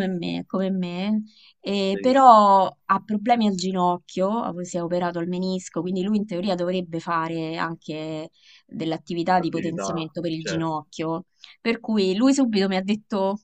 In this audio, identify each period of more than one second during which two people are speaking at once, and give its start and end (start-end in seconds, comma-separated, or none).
9.3-10.7